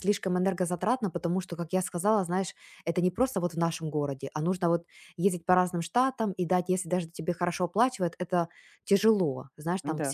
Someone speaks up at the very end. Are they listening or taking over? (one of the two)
listening